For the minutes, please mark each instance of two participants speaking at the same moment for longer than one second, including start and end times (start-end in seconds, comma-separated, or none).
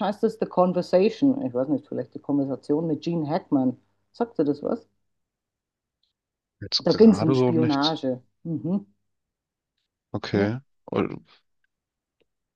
6.8-8.0